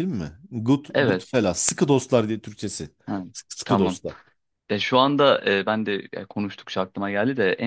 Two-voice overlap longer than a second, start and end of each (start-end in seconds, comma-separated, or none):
none